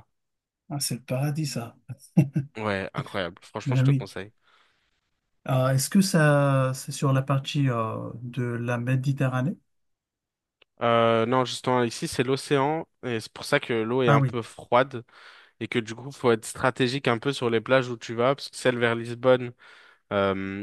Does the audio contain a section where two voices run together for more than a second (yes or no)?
no